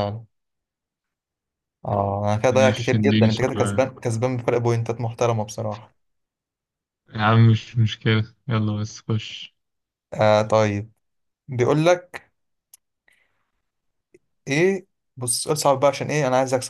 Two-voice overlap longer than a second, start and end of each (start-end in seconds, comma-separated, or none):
2.5-3.8